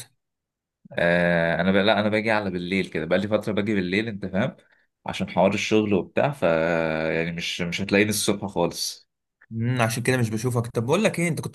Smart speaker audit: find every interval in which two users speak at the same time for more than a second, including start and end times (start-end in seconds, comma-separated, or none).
none